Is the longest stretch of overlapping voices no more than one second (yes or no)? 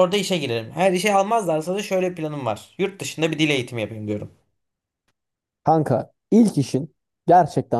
yes